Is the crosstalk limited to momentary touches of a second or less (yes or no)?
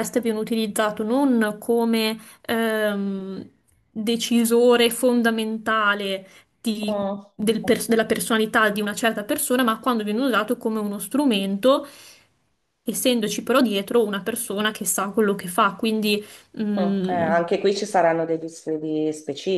yes